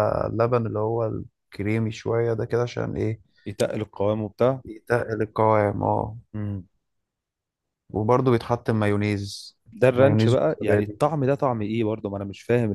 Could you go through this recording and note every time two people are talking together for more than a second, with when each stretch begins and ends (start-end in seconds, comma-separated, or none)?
9.7-11.0